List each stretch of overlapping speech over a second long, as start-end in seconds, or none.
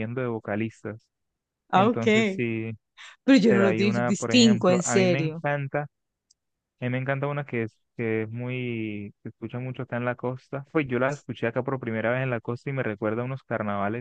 3.5-5.4